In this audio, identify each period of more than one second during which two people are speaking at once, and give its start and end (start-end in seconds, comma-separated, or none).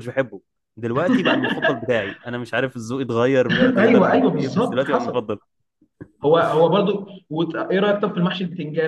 3.8-5.3